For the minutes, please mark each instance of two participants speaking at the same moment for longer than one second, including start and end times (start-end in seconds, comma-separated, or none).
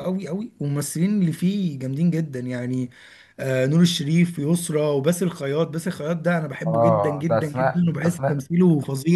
6.7-8.5